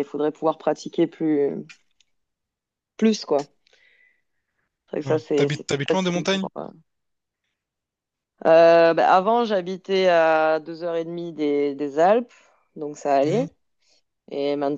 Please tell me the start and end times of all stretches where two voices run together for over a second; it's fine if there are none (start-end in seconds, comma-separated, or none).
5.0-6.5